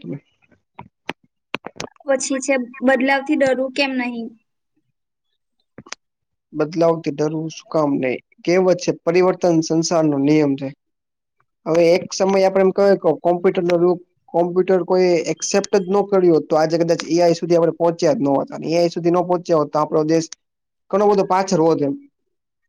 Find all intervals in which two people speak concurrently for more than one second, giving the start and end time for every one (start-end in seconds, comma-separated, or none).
none